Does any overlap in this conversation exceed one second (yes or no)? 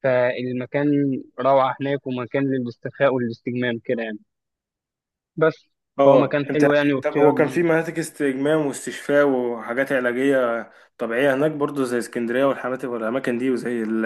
yes